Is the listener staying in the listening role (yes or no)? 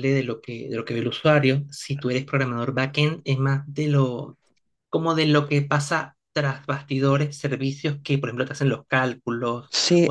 no